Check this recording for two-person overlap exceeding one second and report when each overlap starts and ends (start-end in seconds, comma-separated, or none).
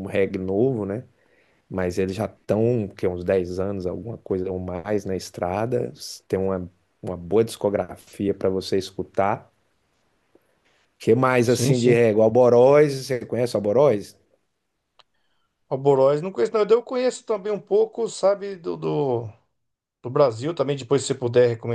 none